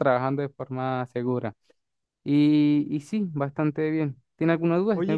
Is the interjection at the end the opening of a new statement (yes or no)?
yes